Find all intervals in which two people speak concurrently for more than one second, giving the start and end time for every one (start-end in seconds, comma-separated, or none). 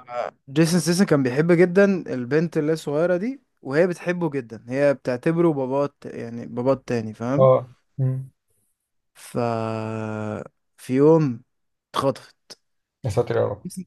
none